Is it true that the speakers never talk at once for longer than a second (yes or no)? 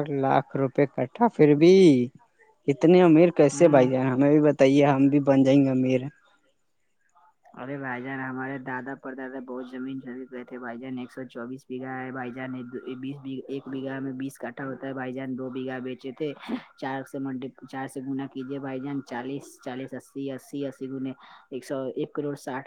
yes